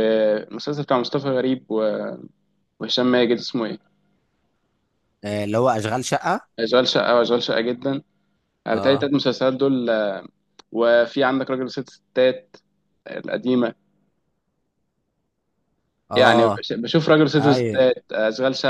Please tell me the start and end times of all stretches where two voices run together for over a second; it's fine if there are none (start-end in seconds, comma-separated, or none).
none